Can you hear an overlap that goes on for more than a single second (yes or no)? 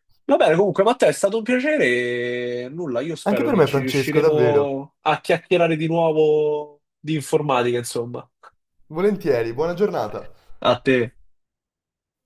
yes